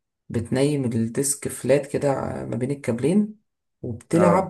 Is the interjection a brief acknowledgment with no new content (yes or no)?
yes